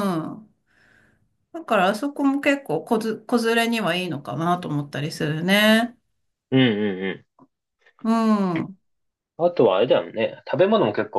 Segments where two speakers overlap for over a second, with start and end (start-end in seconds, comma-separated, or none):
none